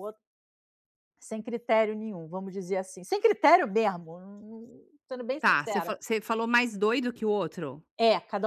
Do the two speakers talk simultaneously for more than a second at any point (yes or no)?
no